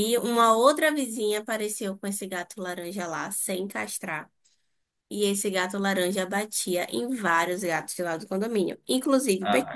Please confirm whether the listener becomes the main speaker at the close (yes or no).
no